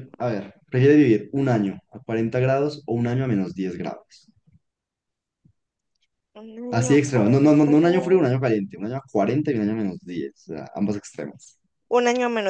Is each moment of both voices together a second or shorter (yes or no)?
no